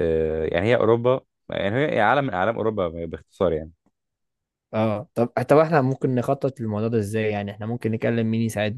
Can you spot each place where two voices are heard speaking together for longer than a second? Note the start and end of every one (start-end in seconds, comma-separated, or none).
none